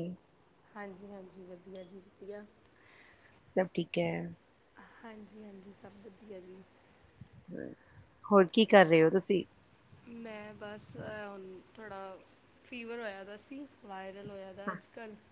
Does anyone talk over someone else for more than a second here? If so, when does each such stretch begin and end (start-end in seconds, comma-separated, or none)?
none